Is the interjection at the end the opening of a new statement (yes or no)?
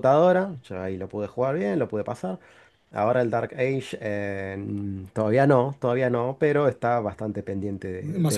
yes